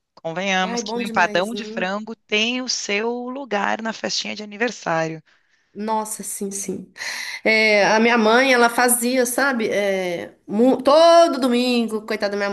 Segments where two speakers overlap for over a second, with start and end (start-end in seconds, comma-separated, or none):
0.6-1.8